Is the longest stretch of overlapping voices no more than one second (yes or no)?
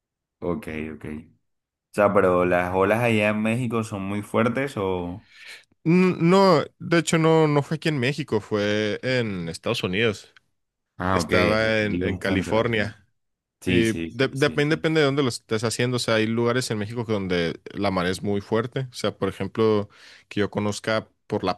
no